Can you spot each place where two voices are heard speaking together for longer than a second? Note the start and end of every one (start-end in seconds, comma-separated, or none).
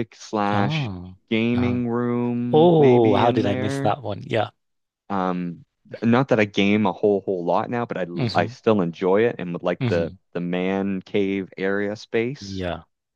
2.5-4.0